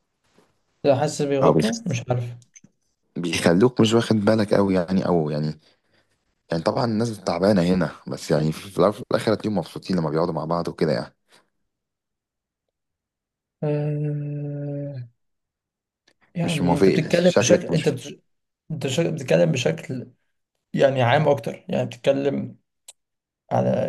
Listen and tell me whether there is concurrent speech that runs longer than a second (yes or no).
yes